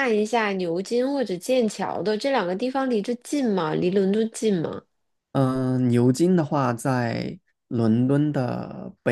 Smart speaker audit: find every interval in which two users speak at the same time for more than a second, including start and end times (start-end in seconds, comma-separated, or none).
none